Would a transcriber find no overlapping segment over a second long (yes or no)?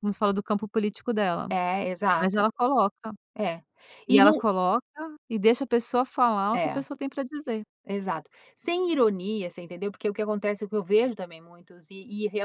yes